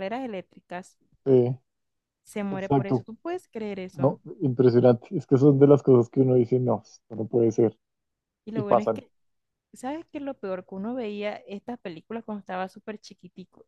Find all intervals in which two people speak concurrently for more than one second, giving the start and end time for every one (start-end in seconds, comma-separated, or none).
none